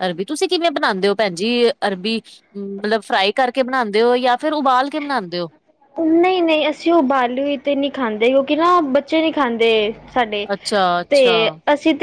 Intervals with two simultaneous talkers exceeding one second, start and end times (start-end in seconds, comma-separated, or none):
none